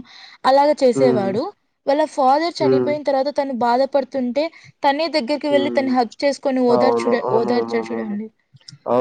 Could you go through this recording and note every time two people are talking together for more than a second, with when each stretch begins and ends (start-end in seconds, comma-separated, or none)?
6.7-8.1